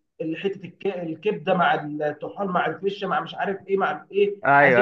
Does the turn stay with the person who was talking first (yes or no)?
yes